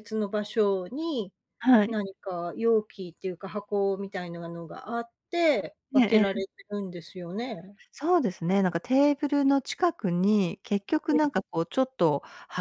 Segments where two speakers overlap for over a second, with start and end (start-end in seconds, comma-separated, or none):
none